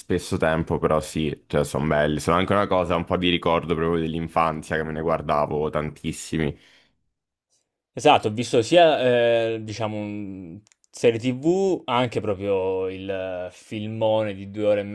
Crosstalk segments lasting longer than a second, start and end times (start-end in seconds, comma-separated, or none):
none